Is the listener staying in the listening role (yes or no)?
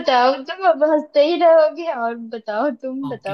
no